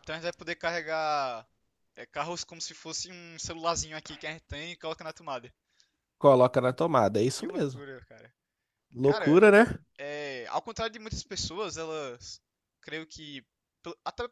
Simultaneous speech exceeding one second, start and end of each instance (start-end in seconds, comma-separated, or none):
none